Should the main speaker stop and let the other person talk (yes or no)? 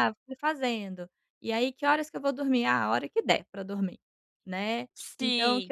no